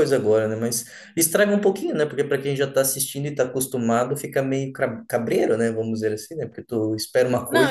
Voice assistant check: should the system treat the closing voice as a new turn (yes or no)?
yes